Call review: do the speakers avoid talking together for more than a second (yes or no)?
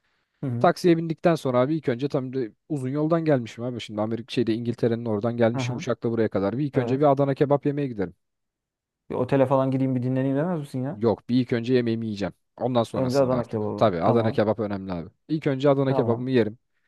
no